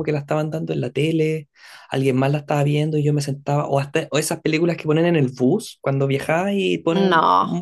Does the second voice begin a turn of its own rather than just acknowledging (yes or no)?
no